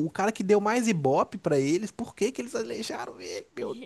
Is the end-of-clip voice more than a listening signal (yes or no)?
yes